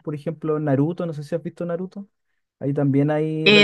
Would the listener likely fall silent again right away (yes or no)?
no